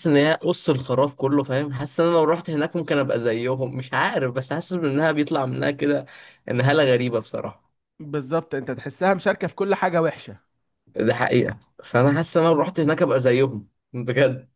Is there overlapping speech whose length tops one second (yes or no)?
no